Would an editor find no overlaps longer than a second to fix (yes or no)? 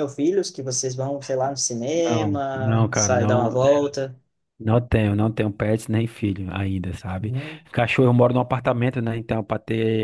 no